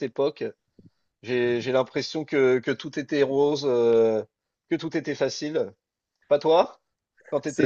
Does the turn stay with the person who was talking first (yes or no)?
no